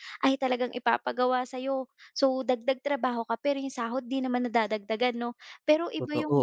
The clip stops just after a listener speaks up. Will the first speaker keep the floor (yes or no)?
yes